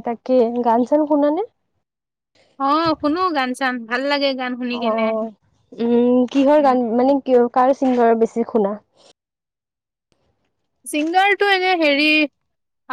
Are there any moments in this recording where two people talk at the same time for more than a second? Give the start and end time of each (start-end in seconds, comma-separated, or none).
none